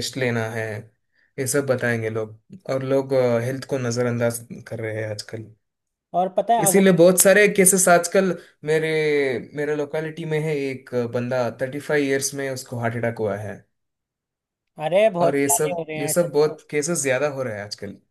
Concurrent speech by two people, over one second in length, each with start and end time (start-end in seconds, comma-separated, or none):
15.2-16.6